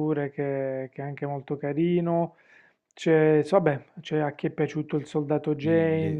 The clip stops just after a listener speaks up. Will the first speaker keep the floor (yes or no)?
no